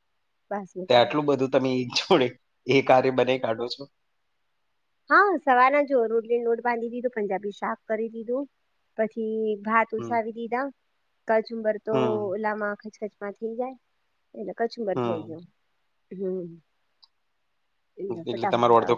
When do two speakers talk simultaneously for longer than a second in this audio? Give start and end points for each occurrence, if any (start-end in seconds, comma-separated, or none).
none